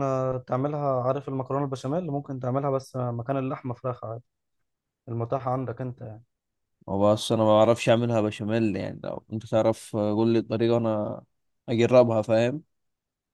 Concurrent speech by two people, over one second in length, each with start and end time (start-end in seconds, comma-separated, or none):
none